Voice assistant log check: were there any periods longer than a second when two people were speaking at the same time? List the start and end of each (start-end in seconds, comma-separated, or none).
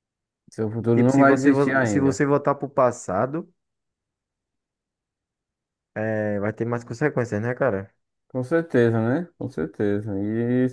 0.9-2.2